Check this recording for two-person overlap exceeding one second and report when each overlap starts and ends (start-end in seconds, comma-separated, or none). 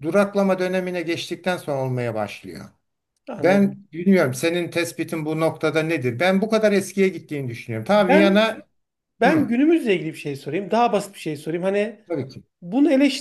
none